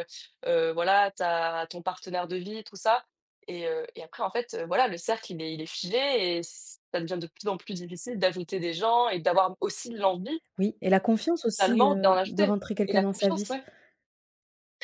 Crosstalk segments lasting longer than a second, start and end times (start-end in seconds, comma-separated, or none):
11.6-13.6